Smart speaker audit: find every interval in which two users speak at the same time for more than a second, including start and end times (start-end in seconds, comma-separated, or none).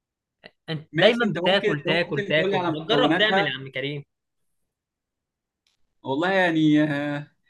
0.9-3.5